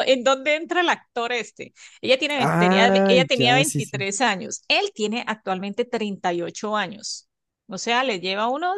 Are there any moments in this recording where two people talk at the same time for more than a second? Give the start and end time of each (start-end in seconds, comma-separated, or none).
2.4-4.1